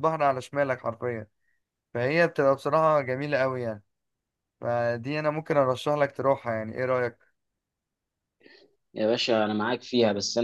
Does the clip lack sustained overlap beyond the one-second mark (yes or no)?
yes